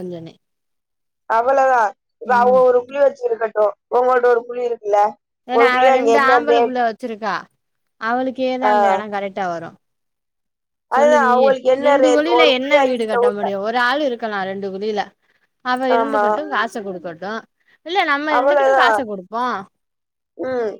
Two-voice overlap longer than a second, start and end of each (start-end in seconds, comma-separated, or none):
10.9-13.4